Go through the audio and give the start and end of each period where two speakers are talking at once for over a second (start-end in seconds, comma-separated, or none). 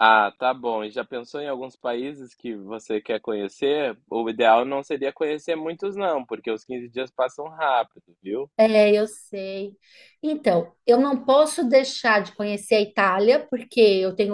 none